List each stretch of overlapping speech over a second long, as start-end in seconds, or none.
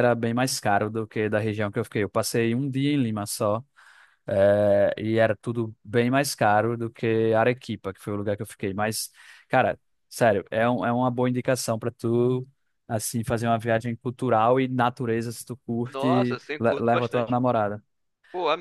15.9-17.4